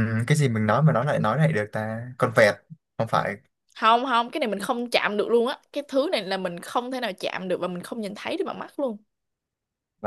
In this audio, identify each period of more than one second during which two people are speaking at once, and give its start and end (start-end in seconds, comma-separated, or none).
none